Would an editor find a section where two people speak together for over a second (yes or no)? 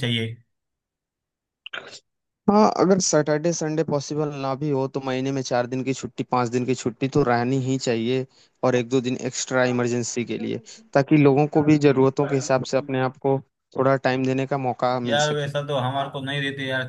no